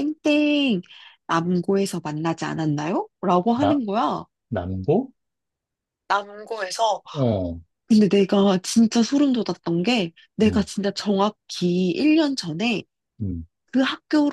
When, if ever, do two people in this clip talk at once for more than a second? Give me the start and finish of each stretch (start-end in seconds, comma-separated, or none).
none